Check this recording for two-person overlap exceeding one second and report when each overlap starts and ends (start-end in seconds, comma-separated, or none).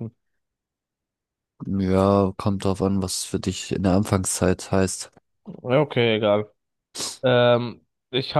none